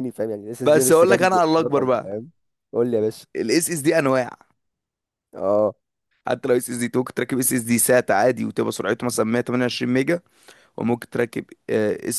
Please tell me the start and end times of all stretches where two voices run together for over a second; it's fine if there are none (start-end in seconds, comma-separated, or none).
0.6-2.2